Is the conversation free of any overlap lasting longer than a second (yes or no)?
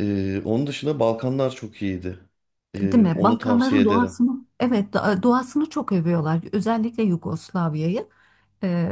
no